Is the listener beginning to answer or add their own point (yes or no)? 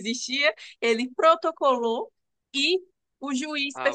no